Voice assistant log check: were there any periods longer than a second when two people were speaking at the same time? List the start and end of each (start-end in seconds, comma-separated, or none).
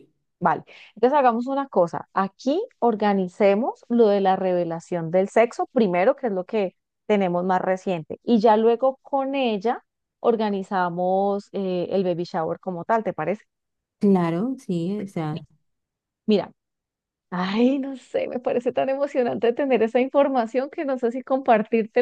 none